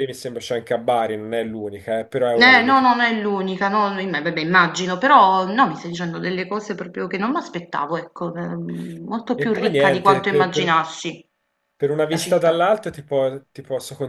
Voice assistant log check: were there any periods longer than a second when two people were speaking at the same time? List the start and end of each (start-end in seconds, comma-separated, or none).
9.4-10.8